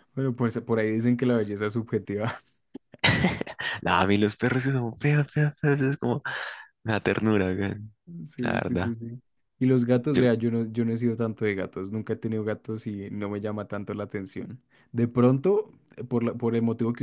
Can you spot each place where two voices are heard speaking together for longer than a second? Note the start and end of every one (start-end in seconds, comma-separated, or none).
none